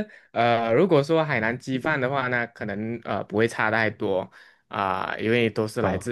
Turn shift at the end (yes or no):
no